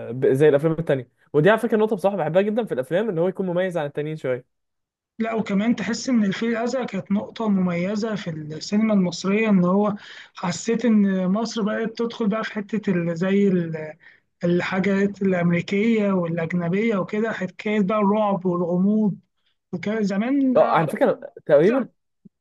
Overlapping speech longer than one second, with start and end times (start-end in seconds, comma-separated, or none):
none